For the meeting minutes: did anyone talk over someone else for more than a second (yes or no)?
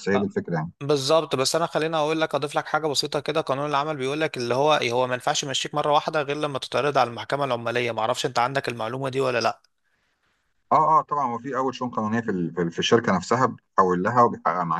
no